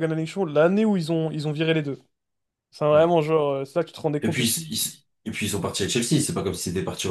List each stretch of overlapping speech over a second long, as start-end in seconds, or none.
none